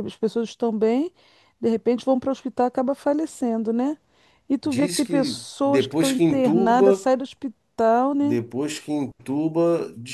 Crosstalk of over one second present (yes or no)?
yes